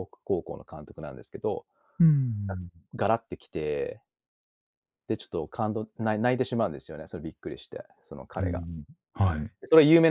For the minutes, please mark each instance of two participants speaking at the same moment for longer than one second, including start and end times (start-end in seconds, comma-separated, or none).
none